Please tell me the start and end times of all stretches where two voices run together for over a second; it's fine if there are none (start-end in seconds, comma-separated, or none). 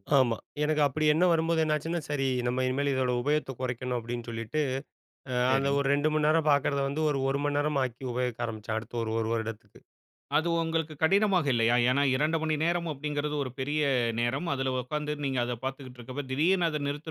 none